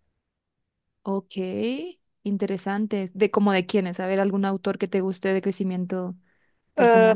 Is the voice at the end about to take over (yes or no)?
yes